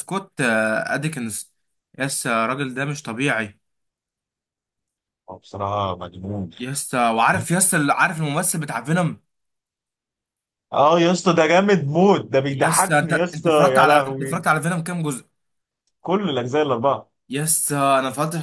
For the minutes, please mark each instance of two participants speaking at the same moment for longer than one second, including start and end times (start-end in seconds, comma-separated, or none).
12.5-14.4